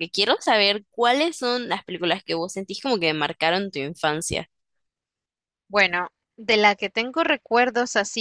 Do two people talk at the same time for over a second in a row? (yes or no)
no